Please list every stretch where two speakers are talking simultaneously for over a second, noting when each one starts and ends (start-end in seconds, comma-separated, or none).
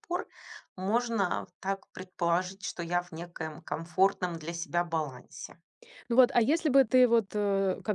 none